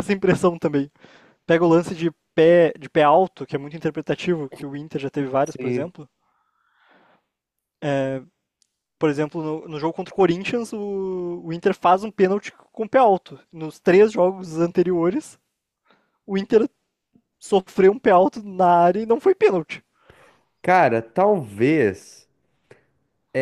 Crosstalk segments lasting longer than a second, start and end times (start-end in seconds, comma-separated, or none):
none